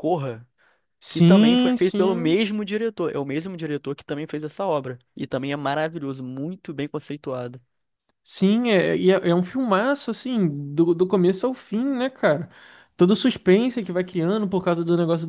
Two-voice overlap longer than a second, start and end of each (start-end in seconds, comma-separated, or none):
1.1-2.4